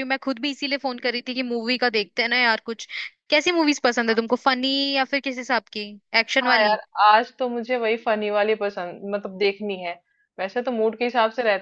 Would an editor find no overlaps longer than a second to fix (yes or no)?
yes